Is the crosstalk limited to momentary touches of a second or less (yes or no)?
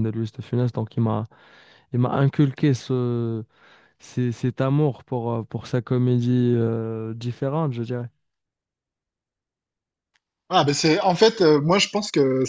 yes